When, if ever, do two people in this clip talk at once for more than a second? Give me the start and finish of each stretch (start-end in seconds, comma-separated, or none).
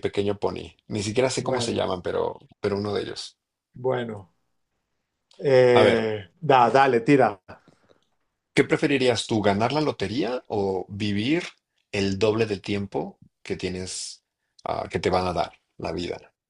none